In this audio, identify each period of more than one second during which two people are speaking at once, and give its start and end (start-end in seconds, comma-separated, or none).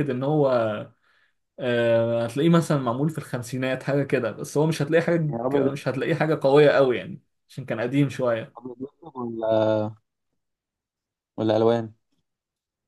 none